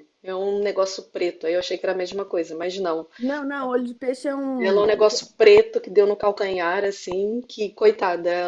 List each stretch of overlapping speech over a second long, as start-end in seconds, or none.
none